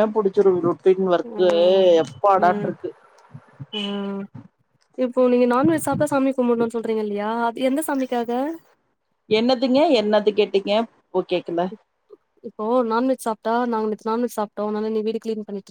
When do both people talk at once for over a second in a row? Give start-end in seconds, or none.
none